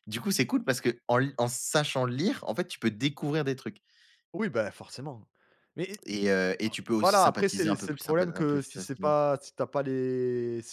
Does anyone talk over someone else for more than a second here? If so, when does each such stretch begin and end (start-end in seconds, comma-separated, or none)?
7.0-9.2